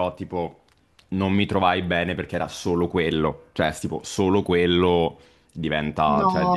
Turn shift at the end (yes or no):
no